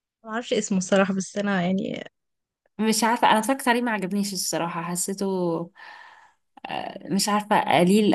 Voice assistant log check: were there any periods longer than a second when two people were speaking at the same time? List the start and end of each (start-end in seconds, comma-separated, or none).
none